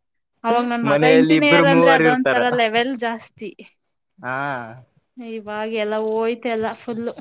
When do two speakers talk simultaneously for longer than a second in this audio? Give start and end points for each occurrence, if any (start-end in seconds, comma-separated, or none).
0.9-2.4